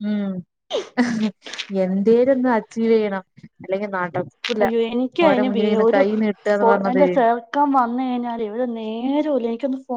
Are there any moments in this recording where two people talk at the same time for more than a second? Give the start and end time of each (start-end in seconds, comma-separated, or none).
none